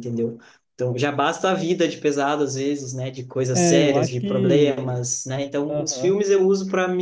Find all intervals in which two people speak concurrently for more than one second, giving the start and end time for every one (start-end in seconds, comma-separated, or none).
3.5-5.0